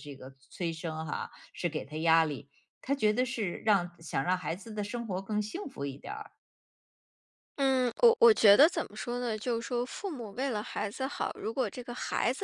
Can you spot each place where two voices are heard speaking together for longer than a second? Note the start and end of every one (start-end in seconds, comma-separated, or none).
none